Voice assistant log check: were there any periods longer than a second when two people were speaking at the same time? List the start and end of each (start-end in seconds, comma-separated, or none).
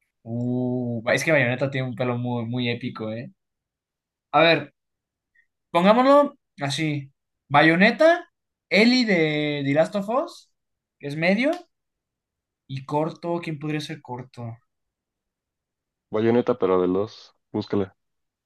none